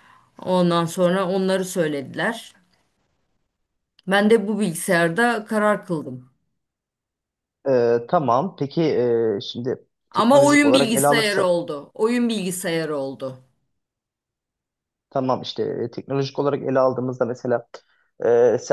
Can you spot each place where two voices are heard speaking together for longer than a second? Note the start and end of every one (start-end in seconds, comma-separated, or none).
10.1-11.5